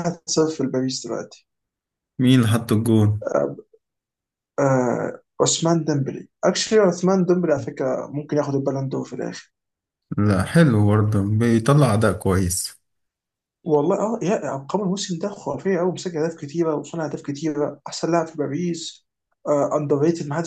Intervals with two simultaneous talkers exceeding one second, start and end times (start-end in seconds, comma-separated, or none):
none